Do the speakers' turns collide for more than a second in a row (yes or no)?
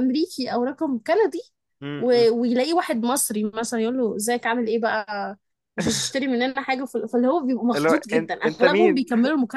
yes